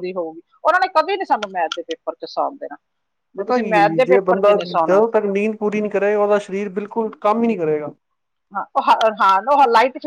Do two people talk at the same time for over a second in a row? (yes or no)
yes